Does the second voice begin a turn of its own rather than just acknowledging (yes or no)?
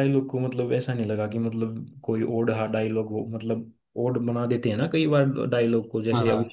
yes